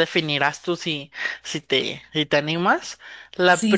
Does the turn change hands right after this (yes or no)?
yes